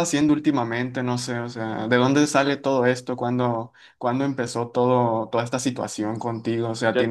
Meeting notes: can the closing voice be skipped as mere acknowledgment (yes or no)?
no